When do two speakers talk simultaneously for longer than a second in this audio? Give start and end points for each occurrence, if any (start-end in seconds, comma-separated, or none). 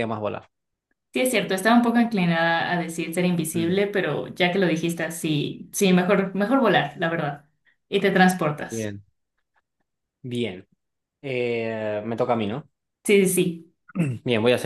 none